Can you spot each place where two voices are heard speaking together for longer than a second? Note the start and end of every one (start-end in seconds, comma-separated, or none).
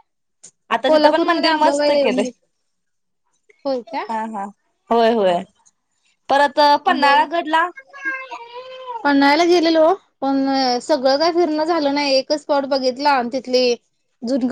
0.9-2.3